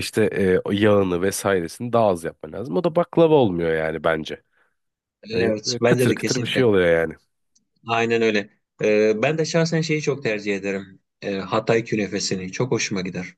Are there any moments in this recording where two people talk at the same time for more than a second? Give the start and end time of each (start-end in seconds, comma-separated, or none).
5.3-6.7